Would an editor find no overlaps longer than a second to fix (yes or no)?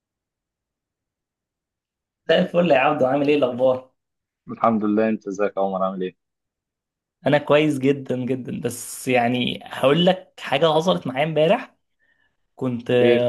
yes